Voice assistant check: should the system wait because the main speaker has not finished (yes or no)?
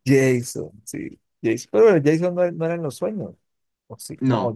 yes